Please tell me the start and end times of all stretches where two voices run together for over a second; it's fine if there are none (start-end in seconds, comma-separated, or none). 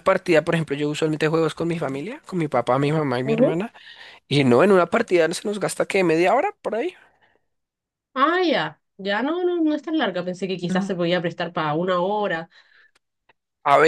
none